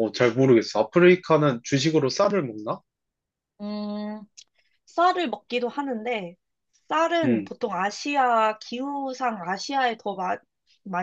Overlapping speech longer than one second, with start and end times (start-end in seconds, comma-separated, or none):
none